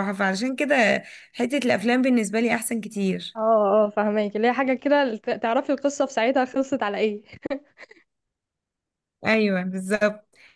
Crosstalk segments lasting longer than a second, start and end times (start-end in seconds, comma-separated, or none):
none